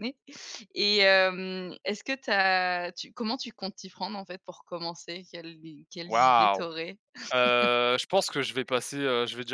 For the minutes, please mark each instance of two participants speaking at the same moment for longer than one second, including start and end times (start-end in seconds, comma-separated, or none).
none